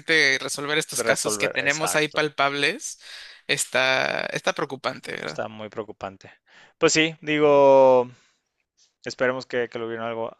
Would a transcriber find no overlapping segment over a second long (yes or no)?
no